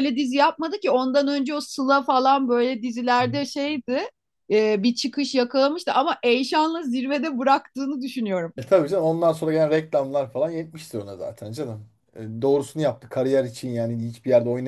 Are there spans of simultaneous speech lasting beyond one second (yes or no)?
no